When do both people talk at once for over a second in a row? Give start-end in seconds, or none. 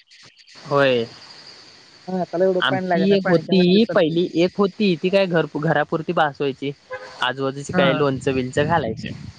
2.7-4.1